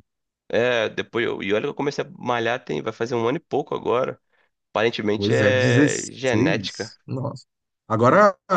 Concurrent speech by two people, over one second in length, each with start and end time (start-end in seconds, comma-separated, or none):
5.2-6.9